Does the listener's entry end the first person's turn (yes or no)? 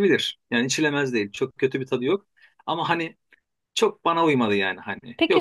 yes